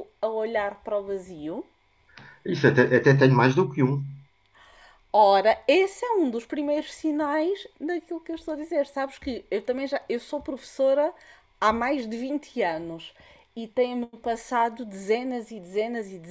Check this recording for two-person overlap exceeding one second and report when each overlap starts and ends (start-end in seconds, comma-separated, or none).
none